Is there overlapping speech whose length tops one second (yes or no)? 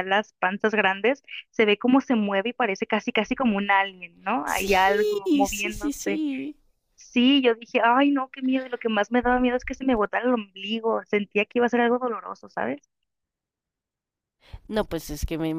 yes